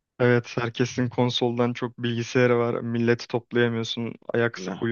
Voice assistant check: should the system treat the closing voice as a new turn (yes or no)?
no